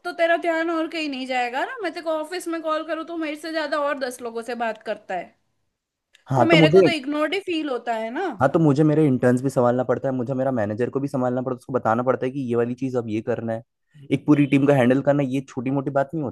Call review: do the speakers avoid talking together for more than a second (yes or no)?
yes